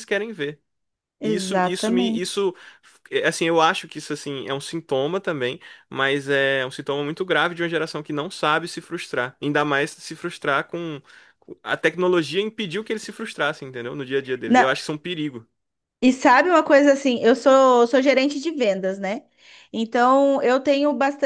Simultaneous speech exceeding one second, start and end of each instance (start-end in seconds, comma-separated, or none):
1.2-2.5